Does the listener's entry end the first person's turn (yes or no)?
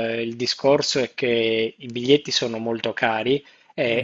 no